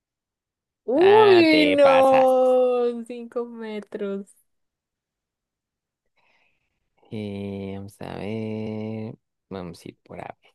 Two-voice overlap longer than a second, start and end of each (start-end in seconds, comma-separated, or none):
0.9-2.5